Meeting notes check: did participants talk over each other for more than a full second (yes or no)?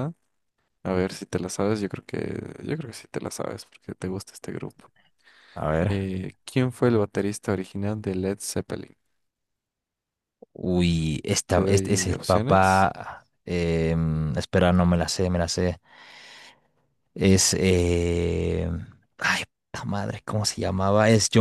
yes